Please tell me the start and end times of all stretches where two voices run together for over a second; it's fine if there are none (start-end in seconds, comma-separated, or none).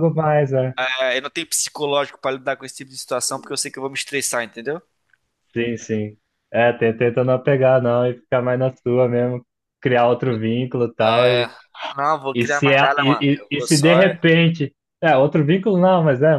12.3-14.2